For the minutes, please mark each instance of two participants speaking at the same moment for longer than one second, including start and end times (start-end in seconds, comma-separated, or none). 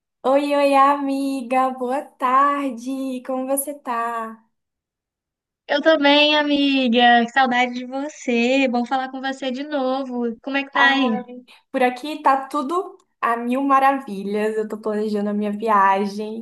none